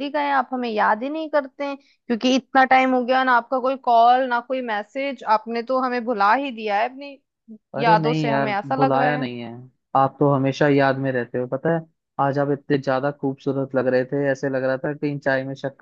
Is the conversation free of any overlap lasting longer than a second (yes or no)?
no